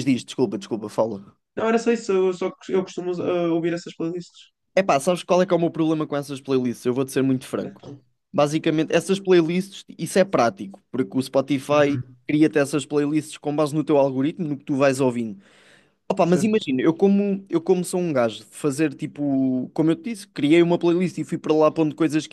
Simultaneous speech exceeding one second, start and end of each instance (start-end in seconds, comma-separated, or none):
none